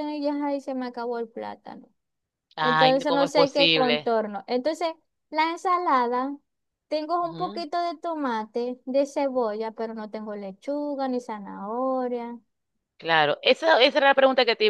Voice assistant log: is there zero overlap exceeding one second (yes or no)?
no